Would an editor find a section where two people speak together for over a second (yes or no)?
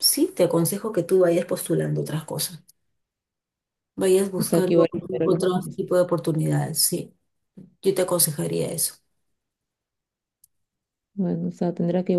yes